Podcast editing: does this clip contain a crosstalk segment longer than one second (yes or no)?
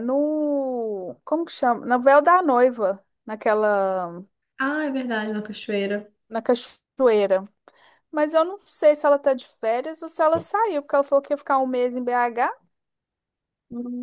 no